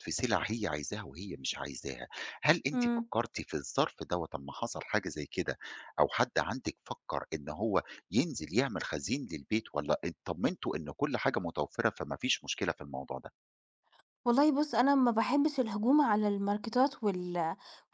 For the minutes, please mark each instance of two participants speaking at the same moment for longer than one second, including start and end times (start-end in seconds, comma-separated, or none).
none